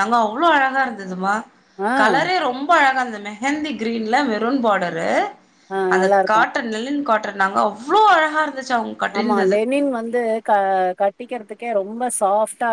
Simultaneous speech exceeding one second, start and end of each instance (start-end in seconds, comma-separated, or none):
none